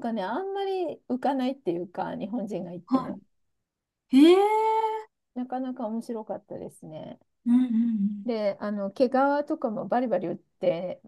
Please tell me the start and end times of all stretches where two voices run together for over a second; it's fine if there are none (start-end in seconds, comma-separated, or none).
none